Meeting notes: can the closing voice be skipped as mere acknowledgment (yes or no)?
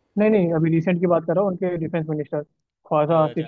no